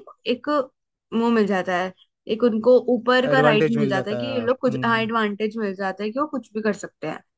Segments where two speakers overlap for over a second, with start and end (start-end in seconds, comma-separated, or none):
3.3-5.0